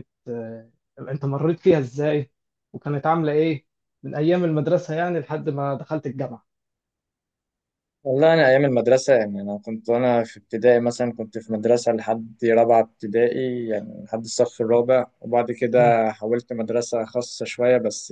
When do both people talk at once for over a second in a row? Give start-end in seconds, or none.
none